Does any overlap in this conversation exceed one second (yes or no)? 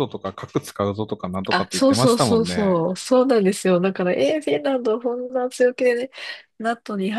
yes